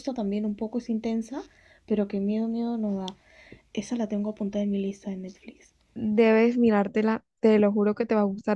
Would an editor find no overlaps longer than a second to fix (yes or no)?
yes